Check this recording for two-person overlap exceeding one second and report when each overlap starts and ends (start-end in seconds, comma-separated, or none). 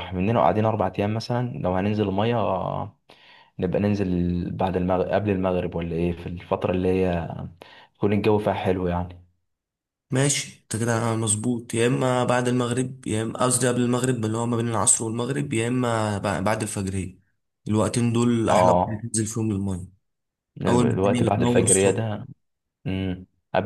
20.7-22.0